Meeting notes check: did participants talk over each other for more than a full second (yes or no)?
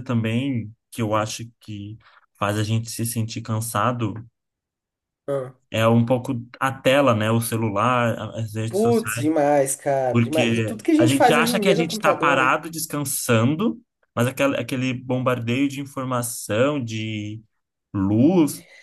yes